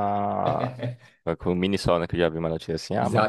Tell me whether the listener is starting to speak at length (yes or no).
yes